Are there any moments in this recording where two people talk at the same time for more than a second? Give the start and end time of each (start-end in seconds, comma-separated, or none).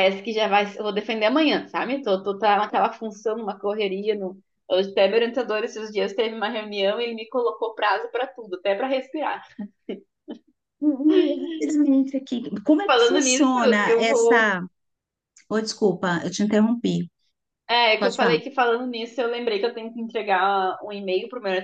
12.8-14.6